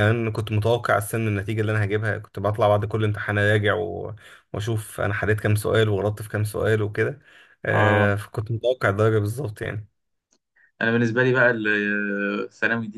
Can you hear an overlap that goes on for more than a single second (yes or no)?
no